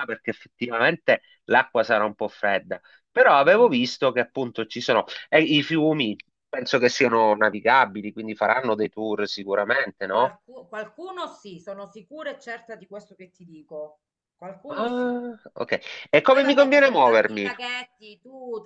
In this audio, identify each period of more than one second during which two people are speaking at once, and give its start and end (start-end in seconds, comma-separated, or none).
16.3-17.5